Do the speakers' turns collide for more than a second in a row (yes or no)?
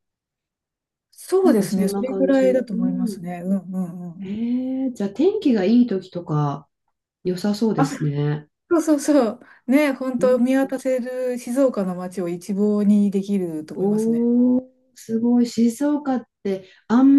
yes